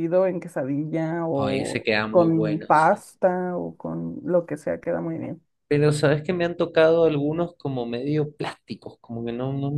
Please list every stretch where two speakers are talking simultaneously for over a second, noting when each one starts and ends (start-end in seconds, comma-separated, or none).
1.3-3.0